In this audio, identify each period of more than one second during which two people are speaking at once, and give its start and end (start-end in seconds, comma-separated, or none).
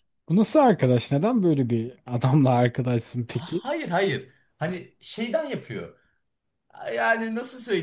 none